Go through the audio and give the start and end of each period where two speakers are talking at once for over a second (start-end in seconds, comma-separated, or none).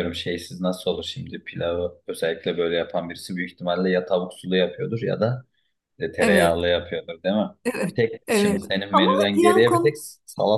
7.9-10.0